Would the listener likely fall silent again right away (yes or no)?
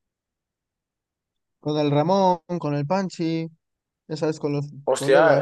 no